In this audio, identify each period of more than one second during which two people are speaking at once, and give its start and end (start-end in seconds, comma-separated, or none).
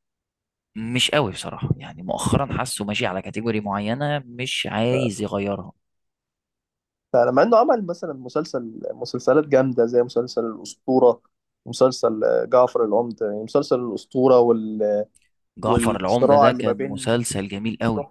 15.6-17.2